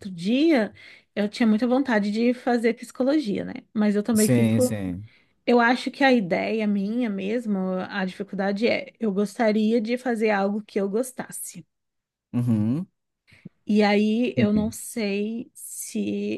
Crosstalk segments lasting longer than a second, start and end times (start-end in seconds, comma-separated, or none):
none